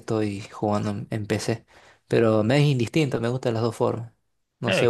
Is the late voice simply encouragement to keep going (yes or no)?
no